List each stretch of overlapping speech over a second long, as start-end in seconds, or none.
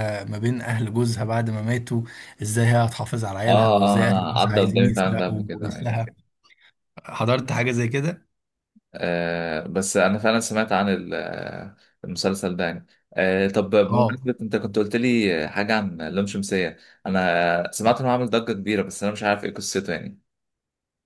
3.5-6.0